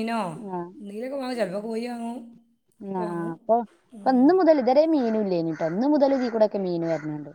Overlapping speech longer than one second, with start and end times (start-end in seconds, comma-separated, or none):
none